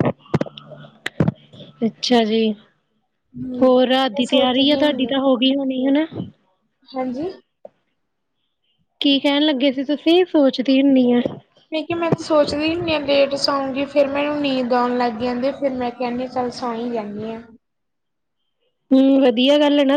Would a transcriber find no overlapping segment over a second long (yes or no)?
no